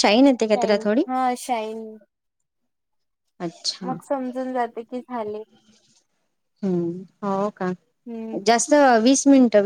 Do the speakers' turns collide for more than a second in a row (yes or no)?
no